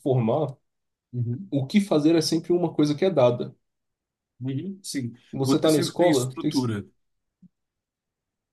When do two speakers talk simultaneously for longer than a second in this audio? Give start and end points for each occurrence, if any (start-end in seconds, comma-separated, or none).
5.3-6.7